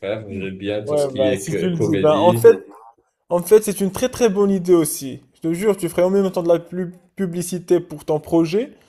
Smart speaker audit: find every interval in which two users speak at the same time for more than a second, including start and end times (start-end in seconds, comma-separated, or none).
0.8-2.5